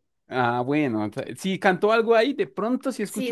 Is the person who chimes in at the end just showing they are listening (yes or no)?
no